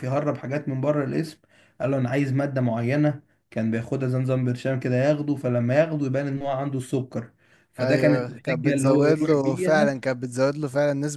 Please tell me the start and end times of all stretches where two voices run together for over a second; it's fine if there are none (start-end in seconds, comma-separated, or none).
7.8-9.9